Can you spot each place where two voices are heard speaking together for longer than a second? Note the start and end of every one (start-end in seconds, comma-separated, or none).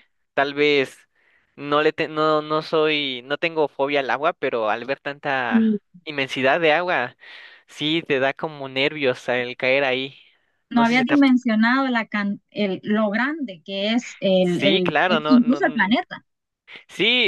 14.4-15.9